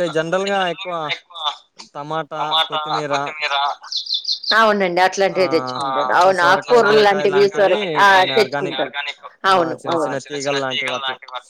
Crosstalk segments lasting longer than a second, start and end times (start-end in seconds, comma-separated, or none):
5.4-7.4, 9.5-11.0